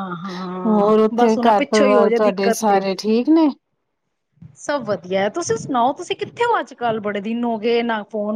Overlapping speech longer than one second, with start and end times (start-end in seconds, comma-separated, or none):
0.7-2.8